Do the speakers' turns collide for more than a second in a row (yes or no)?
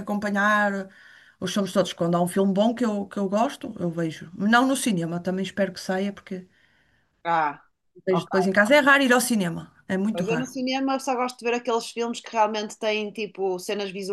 no